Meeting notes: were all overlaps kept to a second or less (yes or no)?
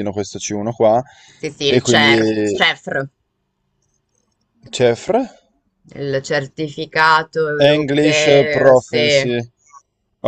no